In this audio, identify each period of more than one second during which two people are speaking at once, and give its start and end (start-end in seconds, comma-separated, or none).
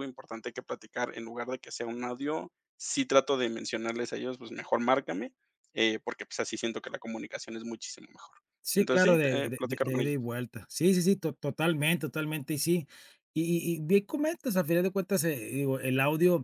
8.8-10.2